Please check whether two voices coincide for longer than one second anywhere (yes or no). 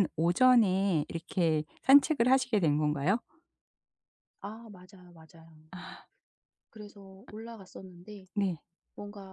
no